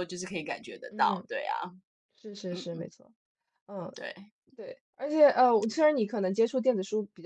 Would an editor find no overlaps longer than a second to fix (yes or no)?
yes